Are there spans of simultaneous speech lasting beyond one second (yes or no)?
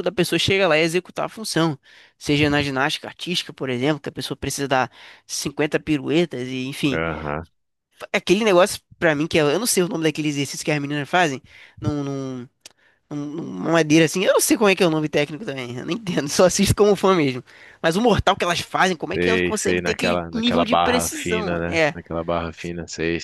yes